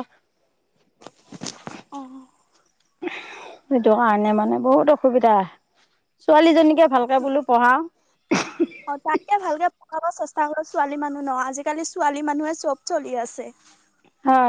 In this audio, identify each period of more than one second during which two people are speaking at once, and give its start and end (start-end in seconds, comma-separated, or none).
none